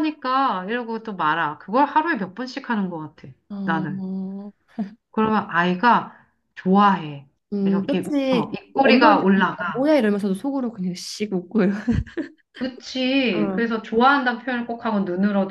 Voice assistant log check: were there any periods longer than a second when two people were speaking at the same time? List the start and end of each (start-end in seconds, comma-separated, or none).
7.5-9.9